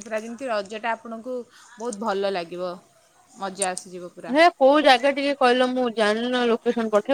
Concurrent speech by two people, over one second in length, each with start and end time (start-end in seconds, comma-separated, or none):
none